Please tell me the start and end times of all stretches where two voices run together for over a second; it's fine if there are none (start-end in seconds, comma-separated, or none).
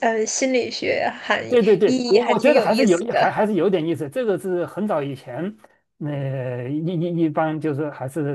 1.8-3.2